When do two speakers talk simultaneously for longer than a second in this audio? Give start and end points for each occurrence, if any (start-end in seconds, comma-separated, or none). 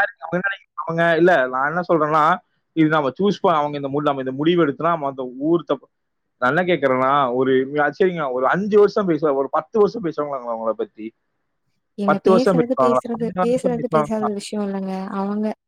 12.1-14.3